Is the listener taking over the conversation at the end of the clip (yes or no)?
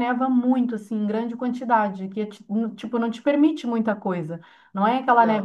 no